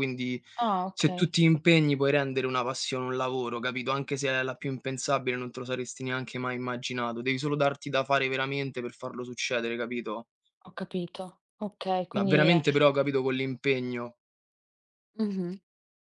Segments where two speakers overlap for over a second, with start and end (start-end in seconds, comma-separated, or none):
none